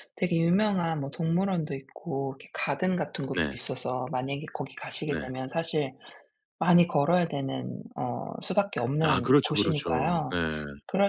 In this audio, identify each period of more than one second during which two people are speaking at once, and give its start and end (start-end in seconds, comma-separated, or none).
9.0-10.4